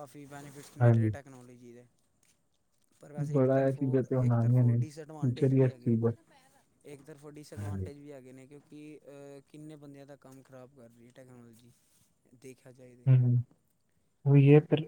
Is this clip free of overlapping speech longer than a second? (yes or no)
no